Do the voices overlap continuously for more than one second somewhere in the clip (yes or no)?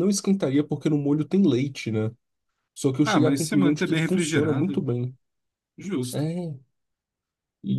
yes